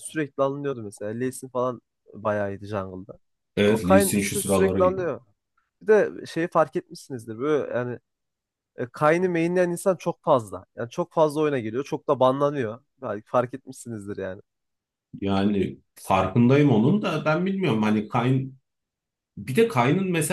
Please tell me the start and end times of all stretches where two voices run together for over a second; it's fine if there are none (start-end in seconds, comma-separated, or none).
3.6-4.9